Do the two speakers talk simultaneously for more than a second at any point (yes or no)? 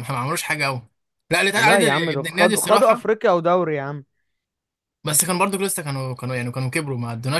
yes